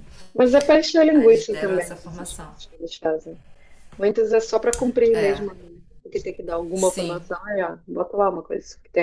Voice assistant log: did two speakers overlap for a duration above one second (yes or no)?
yes